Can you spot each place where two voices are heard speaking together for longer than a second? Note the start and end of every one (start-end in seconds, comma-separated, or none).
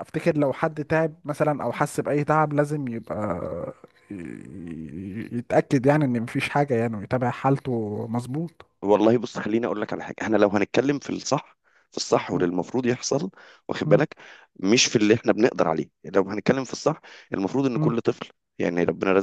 none